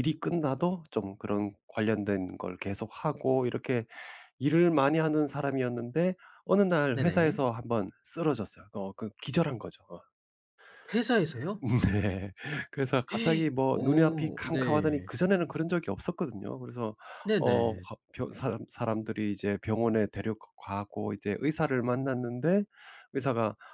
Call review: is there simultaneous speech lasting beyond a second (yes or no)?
yes